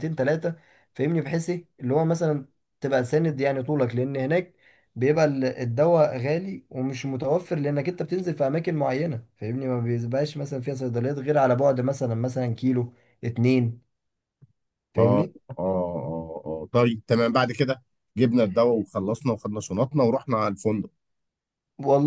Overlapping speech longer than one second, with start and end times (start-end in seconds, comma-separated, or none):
none